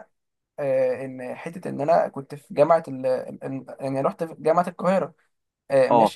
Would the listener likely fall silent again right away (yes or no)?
yes